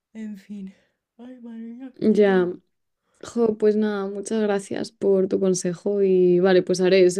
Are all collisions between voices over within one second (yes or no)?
yes